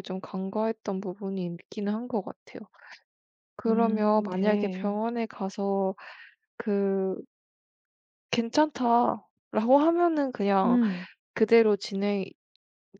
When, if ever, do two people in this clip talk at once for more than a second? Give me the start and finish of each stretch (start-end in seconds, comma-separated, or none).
3.7-5.0